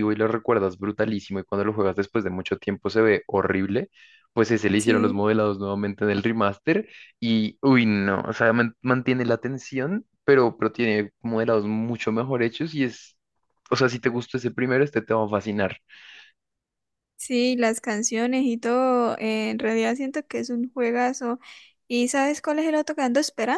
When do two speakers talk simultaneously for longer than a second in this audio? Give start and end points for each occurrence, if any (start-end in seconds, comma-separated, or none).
none